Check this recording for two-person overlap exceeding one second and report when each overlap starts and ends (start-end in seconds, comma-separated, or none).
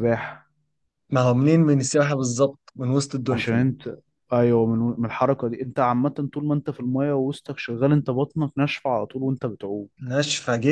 none